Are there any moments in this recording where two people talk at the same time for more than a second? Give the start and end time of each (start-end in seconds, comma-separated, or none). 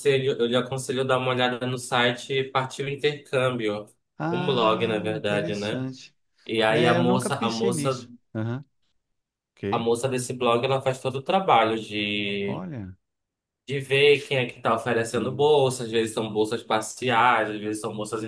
4.3-5.9, 6.7-8.1